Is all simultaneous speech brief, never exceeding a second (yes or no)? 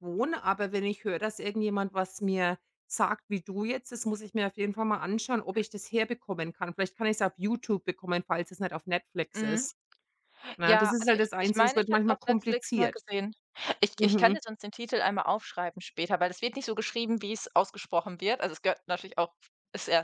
no